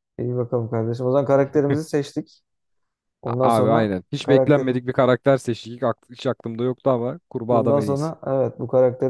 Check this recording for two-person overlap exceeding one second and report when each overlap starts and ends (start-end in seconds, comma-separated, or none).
3.2-4.8